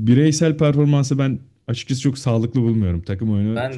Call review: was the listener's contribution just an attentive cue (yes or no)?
no